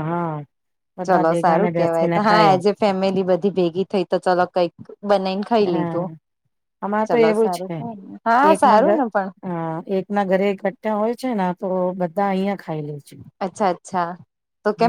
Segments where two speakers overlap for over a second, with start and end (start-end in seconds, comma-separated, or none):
1.1-2.6